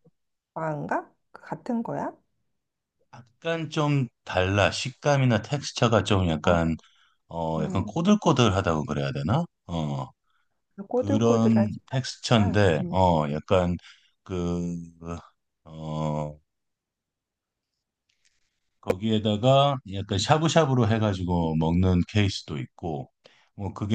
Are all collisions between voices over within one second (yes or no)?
no